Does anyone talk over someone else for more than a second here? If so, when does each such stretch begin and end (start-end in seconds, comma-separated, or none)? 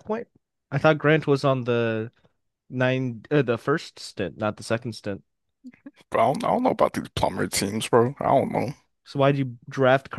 none